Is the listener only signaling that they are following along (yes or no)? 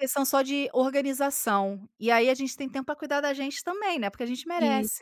no